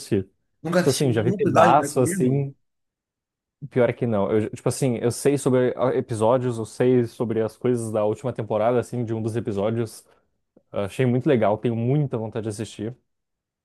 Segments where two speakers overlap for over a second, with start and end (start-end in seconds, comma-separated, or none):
0.7-2.5